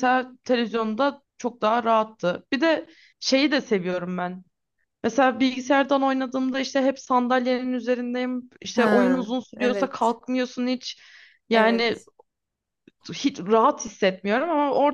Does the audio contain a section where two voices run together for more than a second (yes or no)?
yes